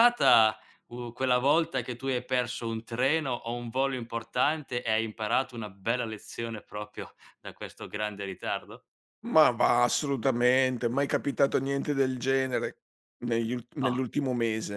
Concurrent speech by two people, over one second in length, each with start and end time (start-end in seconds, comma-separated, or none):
none